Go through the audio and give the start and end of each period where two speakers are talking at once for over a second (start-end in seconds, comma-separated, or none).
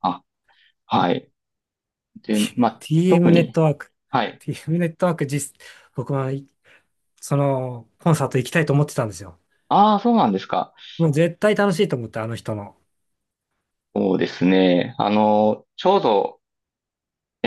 2.3-3.6